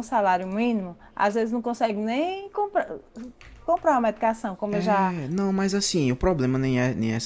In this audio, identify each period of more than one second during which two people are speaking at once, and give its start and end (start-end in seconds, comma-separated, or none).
none